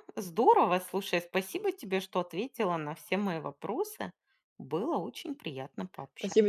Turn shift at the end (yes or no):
yes